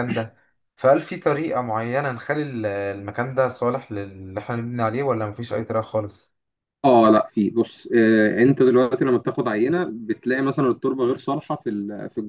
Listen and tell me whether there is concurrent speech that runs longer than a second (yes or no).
no